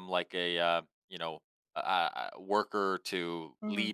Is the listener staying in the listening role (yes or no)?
no